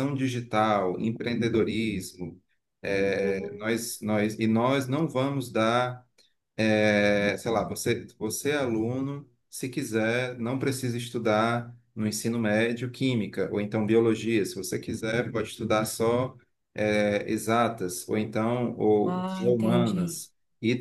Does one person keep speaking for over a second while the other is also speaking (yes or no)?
yes